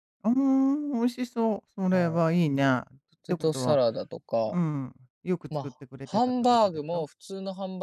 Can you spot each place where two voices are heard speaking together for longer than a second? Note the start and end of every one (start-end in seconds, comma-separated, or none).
5.5-7.1